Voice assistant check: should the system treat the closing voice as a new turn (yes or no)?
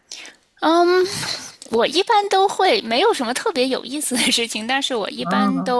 no